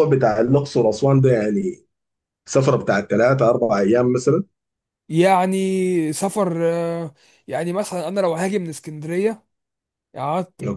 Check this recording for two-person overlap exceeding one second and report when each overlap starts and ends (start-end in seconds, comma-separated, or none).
none